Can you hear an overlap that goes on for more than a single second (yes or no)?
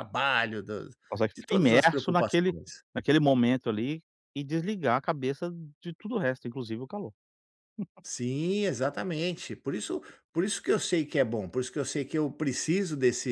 yes